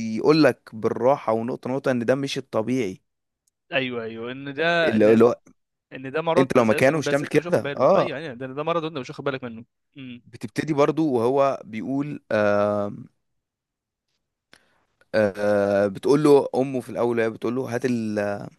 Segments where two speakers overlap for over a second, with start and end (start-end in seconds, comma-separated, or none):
6.4-8.2